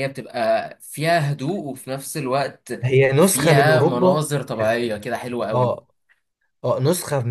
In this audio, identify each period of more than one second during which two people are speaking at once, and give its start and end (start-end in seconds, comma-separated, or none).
3.2-4.8